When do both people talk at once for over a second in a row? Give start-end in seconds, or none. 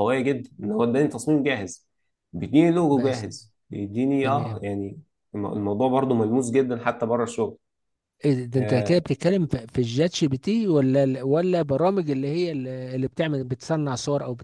none